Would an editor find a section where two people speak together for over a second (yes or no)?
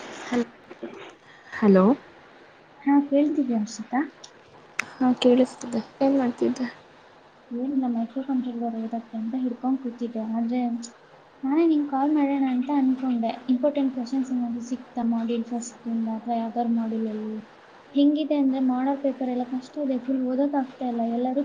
no